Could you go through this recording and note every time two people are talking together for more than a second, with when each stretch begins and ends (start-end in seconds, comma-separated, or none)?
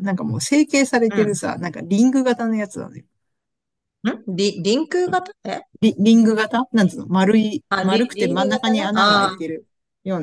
7.7-9.4